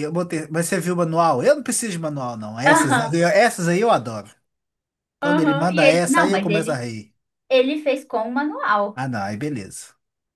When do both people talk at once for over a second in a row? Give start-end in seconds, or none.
5.2-6.9